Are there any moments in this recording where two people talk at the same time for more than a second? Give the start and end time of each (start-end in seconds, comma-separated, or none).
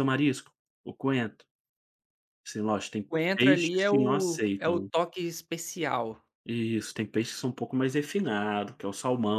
3.1-4.9